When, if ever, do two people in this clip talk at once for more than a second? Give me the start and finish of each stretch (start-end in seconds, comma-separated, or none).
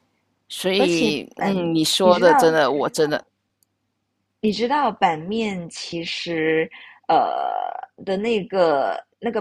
0.8-2.6